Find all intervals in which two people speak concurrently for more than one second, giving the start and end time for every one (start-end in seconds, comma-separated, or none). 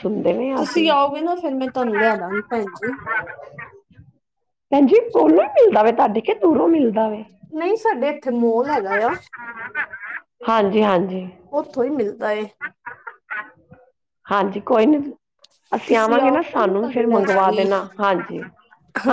15.9-17.7